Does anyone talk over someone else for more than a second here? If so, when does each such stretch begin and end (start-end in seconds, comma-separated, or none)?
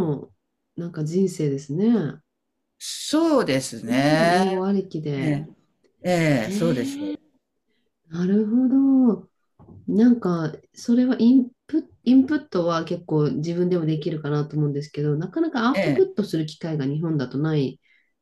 none